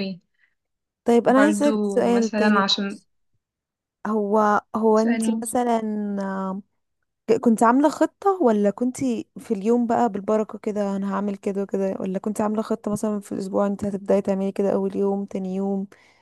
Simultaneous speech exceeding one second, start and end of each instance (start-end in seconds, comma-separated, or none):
1.3-3.0